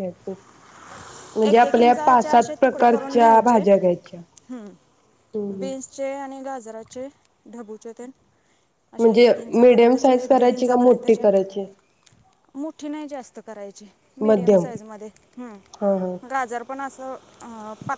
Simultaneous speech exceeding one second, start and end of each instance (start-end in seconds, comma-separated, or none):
1.5-3.6, 9.0-11.2